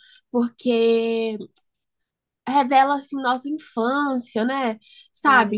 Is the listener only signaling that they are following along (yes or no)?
yes